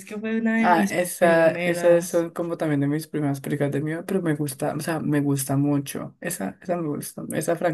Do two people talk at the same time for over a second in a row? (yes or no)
yes